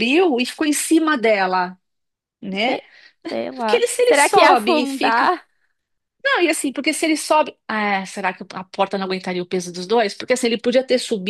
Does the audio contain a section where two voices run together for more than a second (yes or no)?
yes